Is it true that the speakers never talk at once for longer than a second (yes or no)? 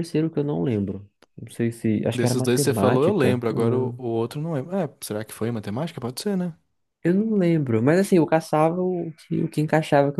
no